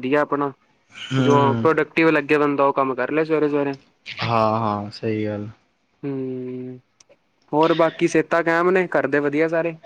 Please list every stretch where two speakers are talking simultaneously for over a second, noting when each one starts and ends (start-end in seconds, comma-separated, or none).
none